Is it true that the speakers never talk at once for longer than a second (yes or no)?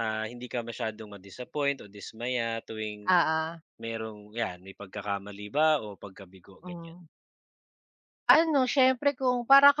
yes